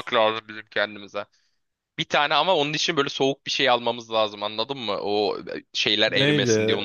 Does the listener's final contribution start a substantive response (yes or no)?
yes